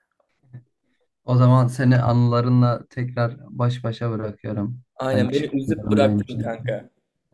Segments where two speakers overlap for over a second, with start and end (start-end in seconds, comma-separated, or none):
5.0-6.8